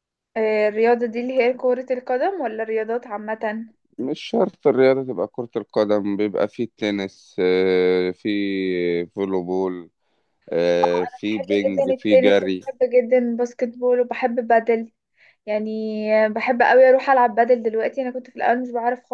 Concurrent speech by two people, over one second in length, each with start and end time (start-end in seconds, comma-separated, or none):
11.1-12.6